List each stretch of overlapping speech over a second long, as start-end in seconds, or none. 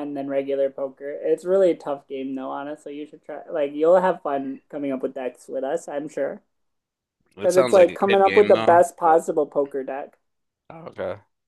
7.4-9.2